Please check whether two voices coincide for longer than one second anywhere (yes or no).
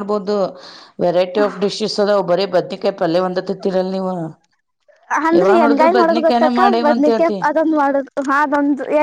yes